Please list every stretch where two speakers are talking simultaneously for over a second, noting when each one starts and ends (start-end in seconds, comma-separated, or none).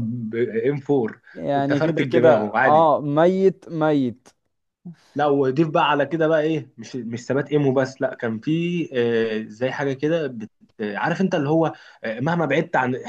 1.3-2.9